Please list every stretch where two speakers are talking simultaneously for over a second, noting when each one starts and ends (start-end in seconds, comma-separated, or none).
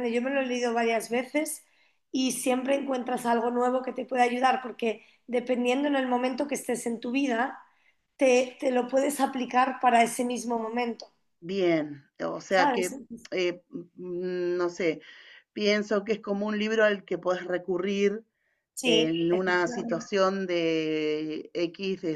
18.8-20.1